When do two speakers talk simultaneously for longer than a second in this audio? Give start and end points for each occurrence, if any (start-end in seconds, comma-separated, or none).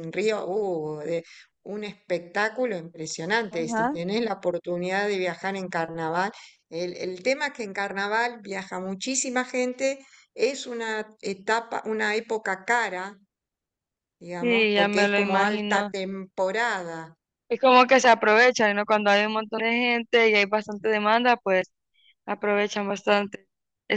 14.4-15.9